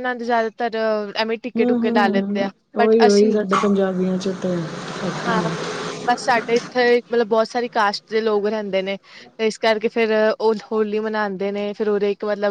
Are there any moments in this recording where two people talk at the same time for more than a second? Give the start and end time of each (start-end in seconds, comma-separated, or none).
1.6-3.4